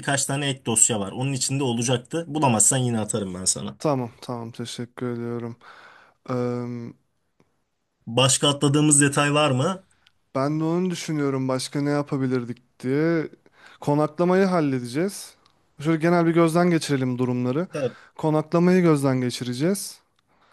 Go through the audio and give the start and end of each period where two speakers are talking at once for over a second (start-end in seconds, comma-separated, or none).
none